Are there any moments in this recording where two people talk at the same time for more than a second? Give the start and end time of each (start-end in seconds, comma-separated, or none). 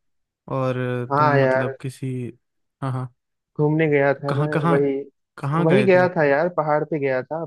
none